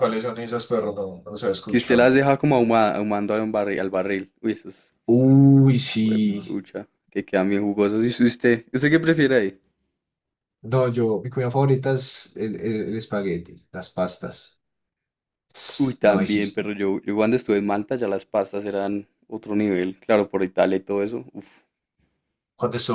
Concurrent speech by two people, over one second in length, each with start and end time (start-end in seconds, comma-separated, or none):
none